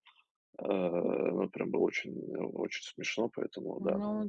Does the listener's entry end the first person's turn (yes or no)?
yes